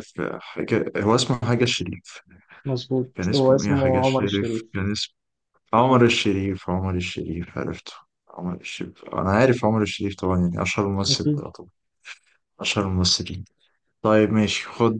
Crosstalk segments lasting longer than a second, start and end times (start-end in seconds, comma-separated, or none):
3.1-4.6